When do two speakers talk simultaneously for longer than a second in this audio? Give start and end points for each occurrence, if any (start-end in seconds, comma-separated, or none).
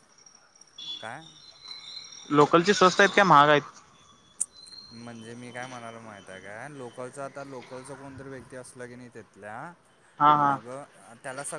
none